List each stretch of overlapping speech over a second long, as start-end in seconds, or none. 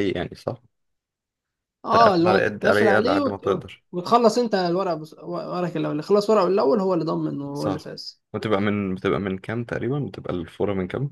1.9-3.8